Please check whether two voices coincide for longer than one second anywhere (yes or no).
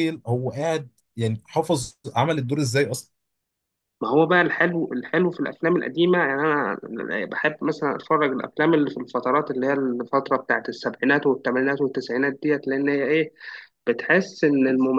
no